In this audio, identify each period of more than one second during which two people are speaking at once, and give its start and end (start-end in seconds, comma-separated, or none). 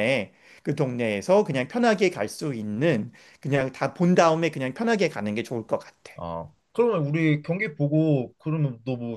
none